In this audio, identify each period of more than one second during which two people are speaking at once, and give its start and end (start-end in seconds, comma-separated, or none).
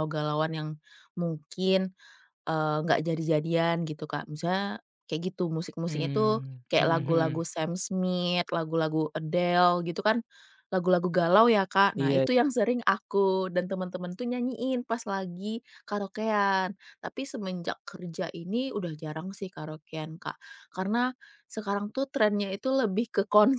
5.9-7.4